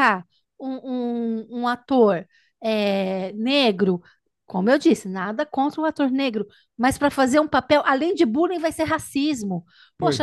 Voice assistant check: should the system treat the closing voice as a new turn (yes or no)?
no